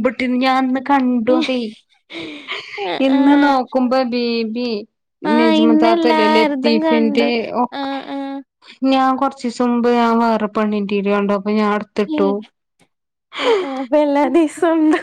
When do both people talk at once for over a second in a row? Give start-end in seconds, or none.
5.4-7.3